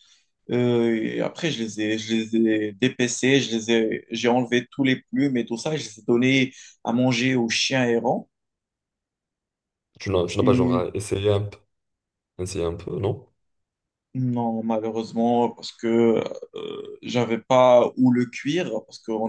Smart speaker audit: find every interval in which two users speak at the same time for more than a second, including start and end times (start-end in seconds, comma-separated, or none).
none